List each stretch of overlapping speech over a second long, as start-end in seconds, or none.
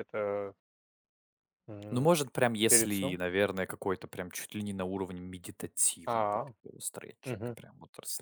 none